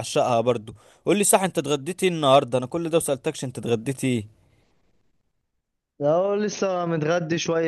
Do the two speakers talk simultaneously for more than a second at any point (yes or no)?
no